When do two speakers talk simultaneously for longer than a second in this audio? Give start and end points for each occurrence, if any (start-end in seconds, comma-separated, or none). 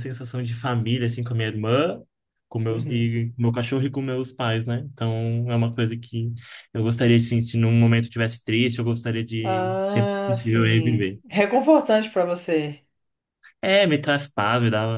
9.4-11.2